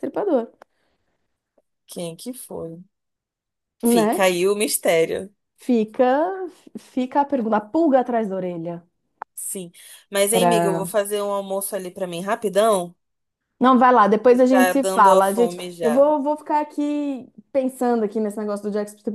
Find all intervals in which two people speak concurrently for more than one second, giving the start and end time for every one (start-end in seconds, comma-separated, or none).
14.3-16.1